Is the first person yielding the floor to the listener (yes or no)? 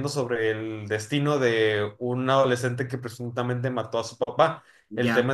no